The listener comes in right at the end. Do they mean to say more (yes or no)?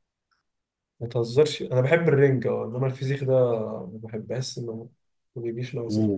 yes